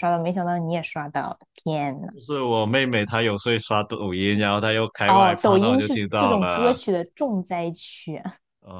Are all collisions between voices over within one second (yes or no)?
no